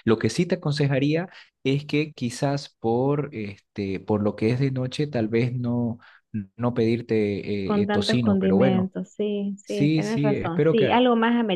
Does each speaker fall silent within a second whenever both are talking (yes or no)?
no